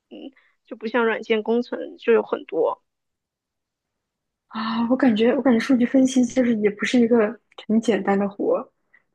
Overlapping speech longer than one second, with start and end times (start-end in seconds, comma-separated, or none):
none